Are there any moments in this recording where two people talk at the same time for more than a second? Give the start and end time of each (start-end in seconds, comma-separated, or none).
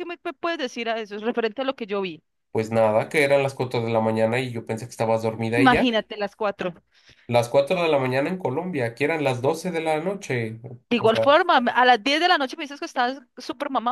none